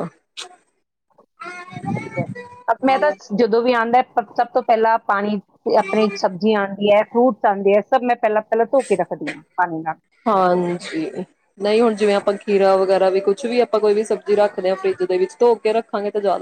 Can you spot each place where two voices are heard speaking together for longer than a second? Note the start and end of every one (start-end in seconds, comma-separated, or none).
none